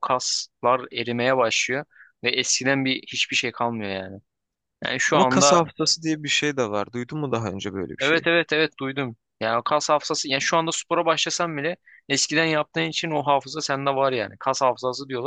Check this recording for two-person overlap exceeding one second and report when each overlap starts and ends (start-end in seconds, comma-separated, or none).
none